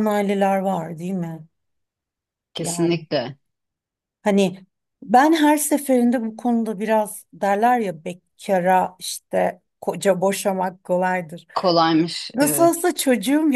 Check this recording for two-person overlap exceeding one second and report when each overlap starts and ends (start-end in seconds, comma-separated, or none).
none